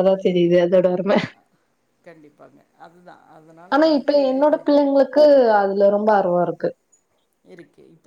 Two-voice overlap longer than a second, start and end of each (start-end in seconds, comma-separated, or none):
none